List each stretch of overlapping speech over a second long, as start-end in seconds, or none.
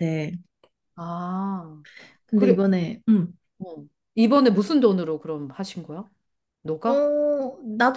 none